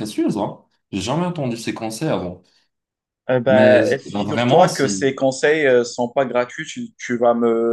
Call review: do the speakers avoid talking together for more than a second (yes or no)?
no